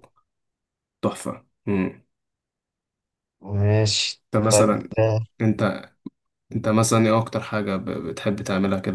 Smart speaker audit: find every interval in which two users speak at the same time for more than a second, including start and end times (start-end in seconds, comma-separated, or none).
none